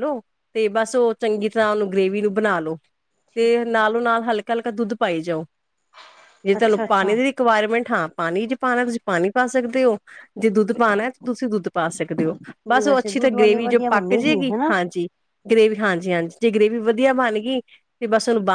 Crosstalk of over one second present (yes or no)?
yes